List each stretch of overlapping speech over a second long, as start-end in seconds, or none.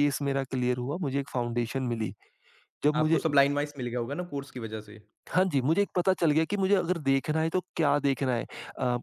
none